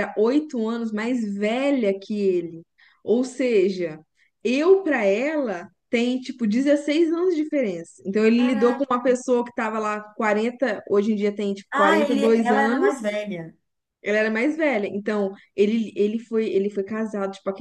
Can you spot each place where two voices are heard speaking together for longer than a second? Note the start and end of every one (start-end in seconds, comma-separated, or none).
11.7-13.1